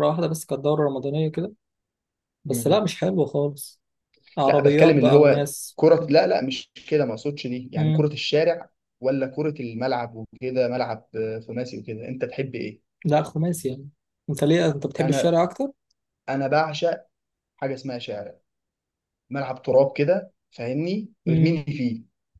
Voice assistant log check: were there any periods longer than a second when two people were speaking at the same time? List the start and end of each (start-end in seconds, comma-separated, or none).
4.5-5.8